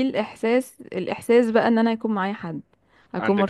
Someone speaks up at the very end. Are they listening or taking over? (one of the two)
listening